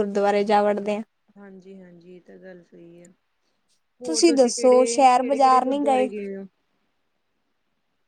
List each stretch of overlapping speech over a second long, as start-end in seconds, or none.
4.3-5.8